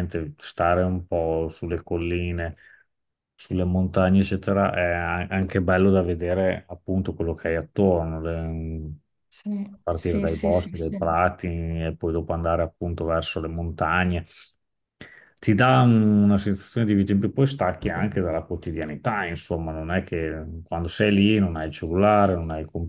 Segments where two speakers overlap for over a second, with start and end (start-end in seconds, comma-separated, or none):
9.7-11.0